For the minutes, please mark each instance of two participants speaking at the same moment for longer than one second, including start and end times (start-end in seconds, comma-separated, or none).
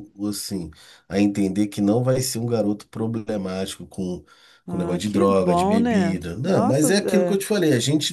4.7-7.4